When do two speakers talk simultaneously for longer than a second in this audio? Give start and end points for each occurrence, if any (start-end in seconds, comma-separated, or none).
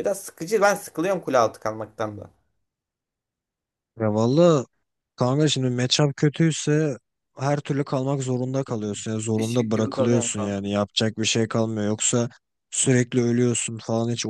9.4-10.7